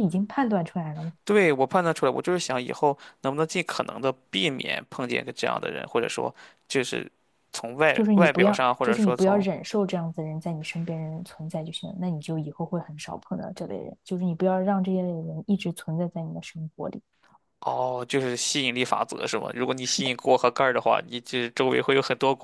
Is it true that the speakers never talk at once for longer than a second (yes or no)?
no